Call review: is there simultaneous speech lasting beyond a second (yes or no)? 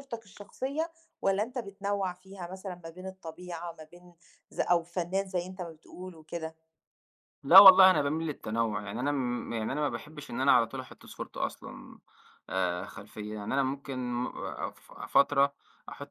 no